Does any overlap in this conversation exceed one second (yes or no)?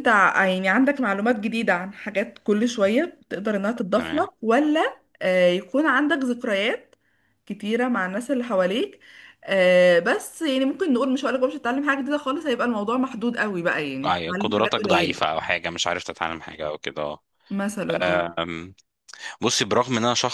yes